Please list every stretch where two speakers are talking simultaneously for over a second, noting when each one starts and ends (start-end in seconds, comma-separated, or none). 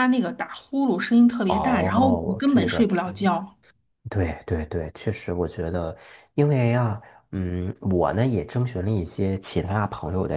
1.5-3.0